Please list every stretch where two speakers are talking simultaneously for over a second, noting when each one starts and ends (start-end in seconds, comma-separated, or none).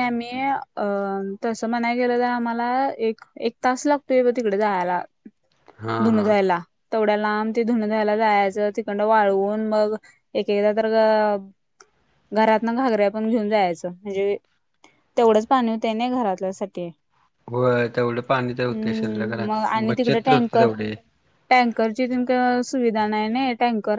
18.7-20.7